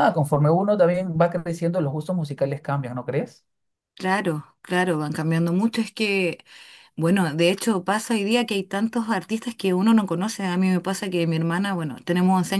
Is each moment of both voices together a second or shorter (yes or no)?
yes